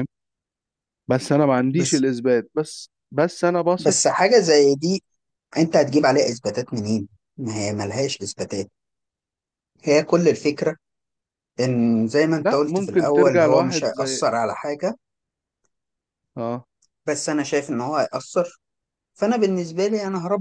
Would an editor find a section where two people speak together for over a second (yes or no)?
yes